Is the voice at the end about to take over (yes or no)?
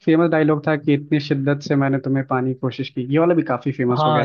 yes